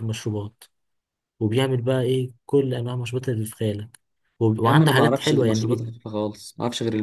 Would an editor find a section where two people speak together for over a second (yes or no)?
yes